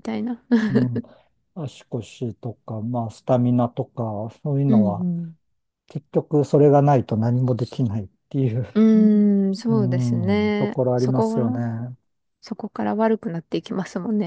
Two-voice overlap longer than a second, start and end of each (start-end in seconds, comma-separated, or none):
9.7-11.6